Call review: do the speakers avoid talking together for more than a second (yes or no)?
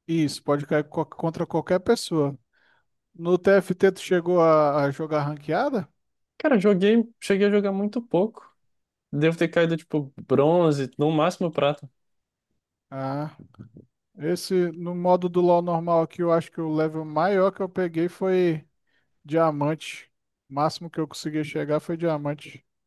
yes